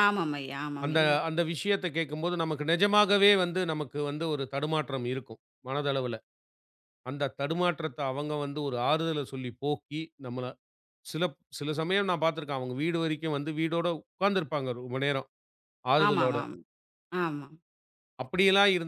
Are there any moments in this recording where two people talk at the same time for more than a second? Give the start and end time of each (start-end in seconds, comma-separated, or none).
none